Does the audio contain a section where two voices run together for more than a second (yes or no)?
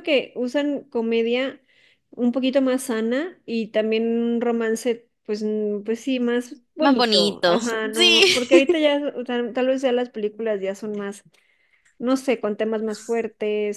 yes